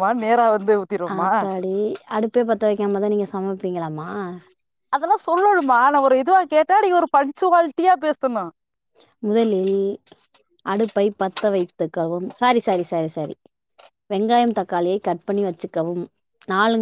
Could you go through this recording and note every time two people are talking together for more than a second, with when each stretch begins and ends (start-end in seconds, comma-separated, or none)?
none